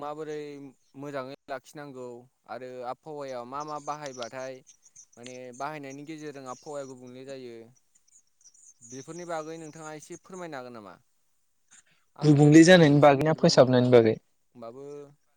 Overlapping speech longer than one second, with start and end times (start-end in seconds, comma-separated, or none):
12.2-13.9